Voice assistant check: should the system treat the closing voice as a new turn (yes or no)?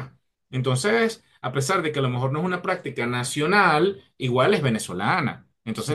no